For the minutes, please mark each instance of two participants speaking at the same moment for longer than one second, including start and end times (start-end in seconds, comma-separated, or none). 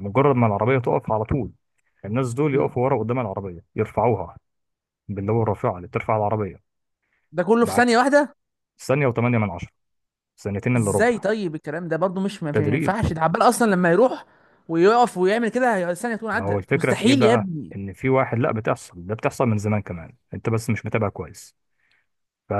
16.3-17.8